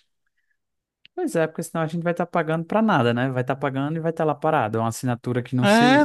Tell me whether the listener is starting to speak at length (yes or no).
yes